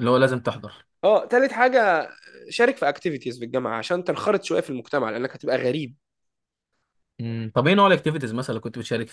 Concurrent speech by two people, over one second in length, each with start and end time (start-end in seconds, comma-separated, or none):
none